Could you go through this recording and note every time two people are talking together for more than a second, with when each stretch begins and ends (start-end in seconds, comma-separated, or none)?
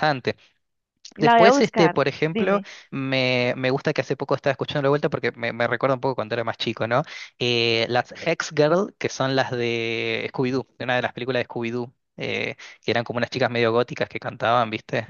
1.2-2.7